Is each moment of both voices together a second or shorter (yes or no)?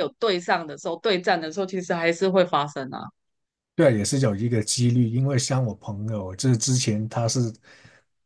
yes